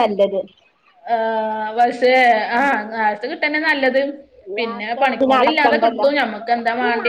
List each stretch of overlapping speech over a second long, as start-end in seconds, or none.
4.6-6.1